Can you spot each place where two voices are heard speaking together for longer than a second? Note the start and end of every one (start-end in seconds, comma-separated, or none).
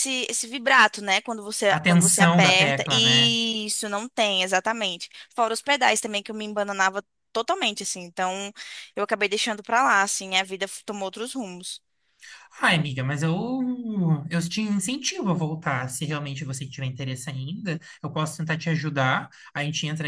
1.7-3.4